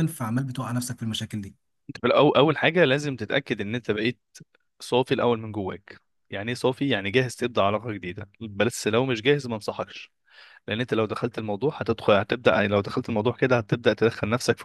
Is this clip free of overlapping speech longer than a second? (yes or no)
yes